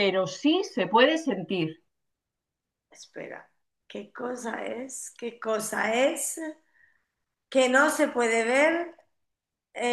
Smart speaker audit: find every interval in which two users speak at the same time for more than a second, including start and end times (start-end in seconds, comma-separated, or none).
none